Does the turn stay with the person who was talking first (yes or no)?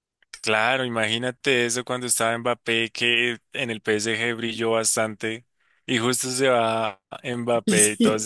yes